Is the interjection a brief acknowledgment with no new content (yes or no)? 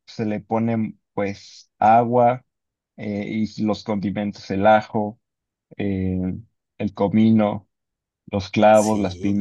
no